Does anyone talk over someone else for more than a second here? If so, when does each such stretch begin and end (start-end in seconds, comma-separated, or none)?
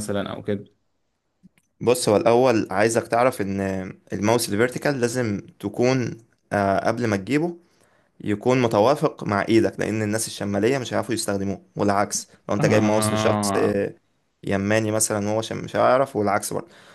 12.6-13.8